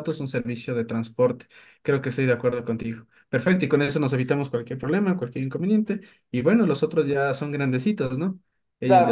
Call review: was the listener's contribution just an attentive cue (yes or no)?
no